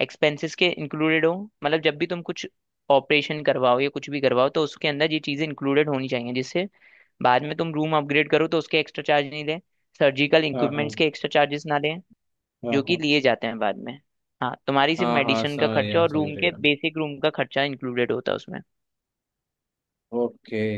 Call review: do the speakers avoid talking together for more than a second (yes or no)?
no